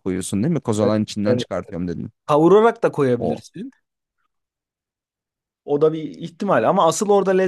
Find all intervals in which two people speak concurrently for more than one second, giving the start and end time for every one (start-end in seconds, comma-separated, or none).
none